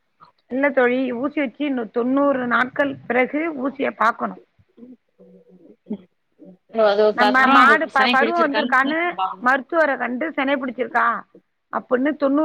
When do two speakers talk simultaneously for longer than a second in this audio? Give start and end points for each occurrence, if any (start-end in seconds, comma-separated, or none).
7.2-9.0